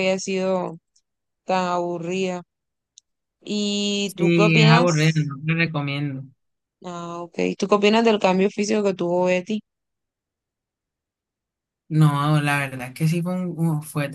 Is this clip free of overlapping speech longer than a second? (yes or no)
no